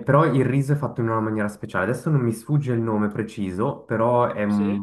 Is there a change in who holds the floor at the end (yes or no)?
no